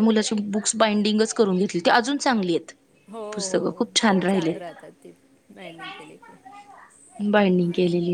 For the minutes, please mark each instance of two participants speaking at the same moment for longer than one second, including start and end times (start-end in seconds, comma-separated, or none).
none